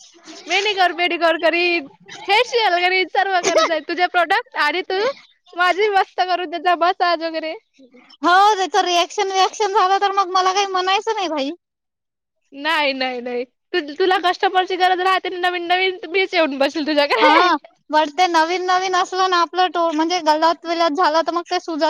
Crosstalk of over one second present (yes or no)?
no